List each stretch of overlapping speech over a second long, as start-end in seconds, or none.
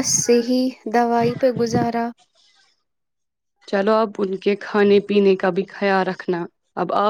none